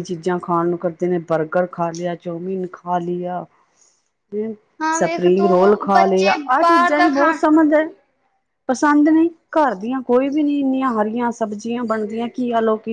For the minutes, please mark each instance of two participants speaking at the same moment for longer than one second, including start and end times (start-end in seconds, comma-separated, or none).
5.0-7.4